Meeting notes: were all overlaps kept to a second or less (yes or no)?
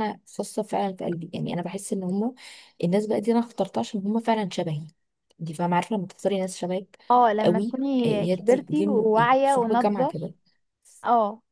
no